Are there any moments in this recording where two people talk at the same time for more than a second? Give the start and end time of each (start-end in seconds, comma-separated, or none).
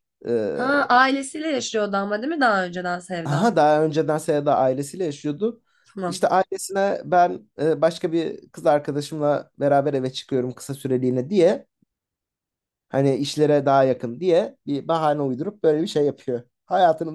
none